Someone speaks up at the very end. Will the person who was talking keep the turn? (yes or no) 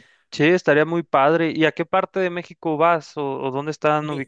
no